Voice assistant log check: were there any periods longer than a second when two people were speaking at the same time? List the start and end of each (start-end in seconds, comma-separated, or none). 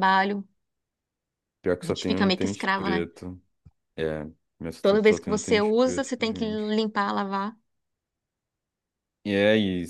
1.8-3.1, 4.8-6.8